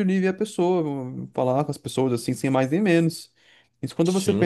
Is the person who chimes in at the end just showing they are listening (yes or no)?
yes